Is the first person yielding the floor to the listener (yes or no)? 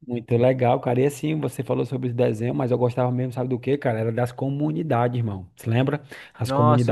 yes